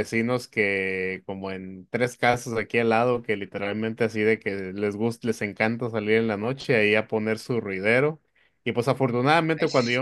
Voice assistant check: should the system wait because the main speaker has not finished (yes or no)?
yes